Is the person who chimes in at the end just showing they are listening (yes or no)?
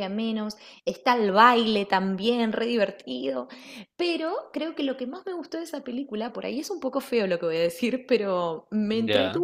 yes